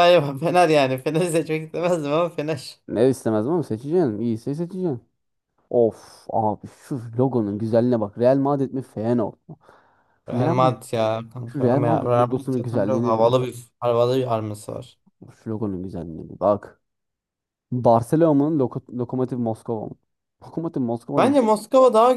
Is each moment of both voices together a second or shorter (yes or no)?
no